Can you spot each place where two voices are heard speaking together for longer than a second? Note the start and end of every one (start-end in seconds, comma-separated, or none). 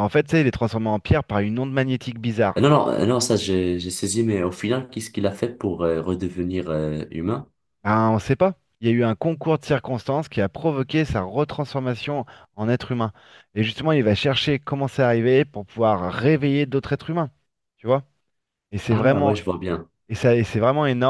none